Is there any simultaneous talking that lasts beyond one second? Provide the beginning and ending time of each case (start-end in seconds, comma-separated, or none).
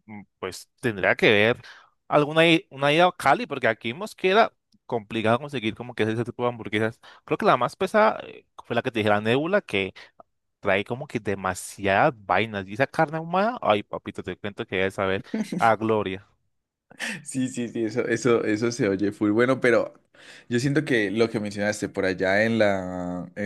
none